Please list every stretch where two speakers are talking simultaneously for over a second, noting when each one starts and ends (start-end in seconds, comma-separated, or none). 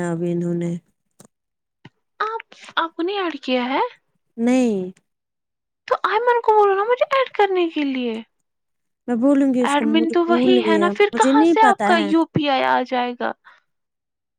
9.7-12.1